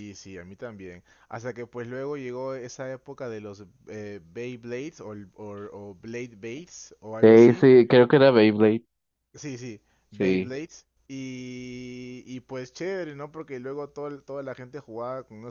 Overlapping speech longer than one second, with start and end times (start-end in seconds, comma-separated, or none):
none